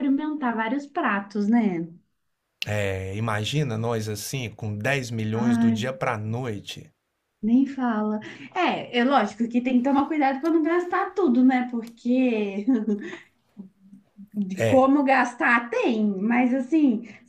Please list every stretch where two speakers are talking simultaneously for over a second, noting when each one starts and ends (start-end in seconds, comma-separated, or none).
none